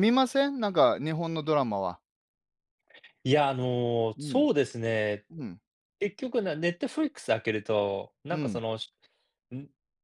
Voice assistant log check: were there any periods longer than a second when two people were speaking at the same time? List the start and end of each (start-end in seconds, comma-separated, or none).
none